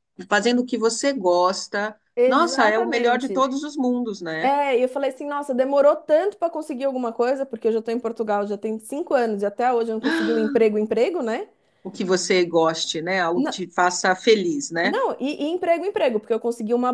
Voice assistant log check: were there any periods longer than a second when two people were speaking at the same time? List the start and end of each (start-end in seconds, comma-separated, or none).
2.2-3.5